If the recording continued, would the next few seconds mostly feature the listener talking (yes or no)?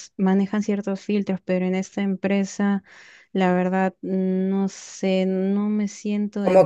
yes